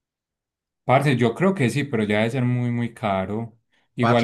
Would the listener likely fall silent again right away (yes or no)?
yes